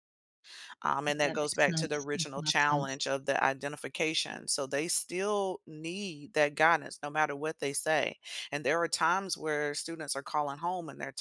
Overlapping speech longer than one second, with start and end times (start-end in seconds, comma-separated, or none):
1.2-3.0